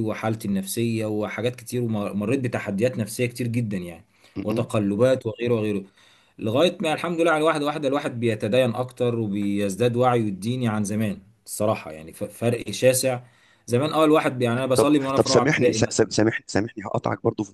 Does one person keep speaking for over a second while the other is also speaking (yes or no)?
yes